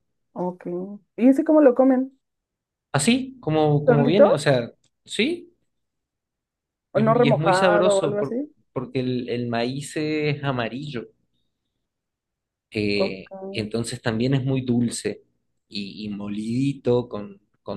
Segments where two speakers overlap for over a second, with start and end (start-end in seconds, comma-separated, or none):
6.9-8.3